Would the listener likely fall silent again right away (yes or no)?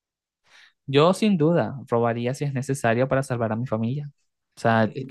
yes